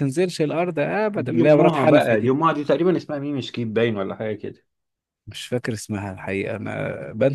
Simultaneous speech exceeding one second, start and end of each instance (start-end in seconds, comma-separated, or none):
1.1-2.3